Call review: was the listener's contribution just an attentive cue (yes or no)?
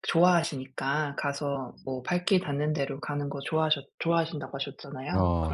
yes